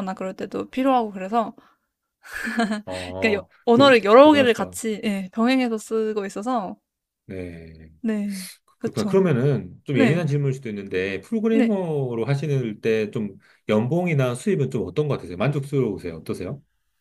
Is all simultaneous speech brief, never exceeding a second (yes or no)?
no